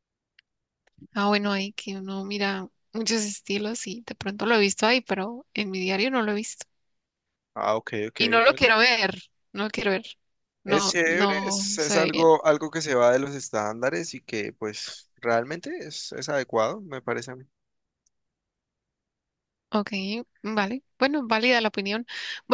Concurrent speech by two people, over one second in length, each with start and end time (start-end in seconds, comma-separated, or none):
10.7-12.3